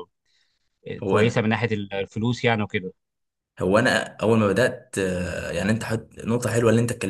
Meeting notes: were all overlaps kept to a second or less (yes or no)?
yes